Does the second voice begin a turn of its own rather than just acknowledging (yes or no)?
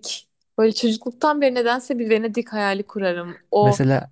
no